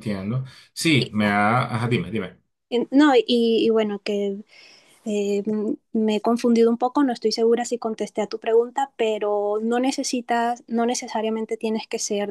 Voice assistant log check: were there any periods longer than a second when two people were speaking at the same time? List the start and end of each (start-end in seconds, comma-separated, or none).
none